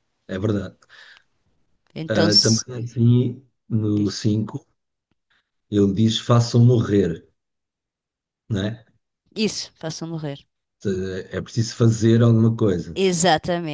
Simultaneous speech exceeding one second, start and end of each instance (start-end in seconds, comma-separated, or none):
none